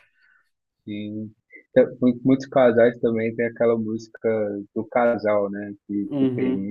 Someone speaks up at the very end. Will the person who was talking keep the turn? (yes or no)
no